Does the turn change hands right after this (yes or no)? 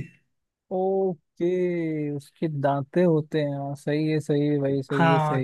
yes